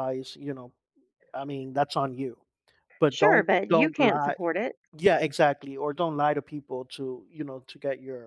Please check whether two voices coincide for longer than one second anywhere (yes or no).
yes